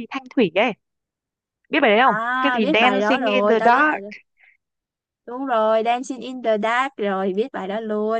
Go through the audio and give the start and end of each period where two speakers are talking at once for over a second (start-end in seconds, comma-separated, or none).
2.0-4.0